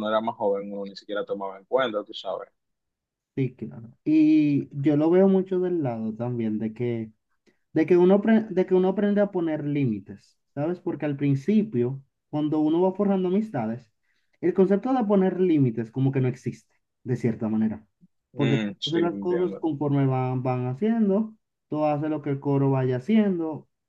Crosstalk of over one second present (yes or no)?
yes